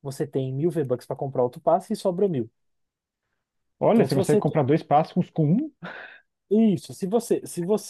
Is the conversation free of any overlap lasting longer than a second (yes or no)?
yes